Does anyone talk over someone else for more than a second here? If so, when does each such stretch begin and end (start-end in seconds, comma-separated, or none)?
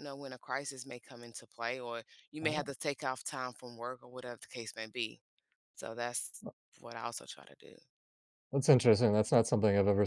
none